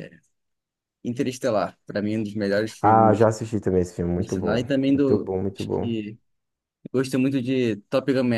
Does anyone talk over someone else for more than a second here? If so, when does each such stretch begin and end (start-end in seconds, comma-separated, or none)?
4.2-5.9